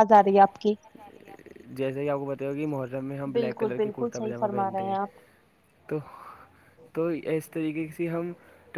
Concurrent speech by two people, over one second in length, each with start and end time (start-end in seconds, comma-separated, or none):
3.4-5.0